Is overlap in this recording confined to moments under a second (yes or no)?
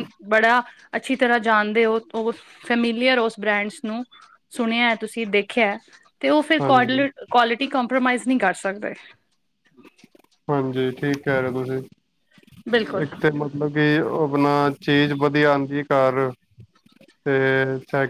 yes